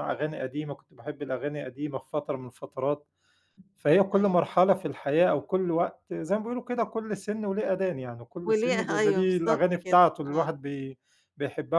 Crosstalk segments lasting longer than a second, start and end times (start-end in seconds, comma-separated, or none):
8.5-10.5